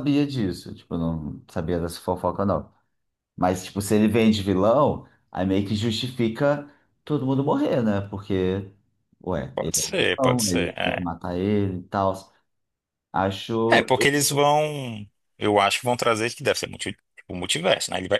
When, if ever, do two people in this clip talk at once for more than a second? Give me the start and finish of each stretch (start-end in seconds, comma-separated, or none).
9.5-11.1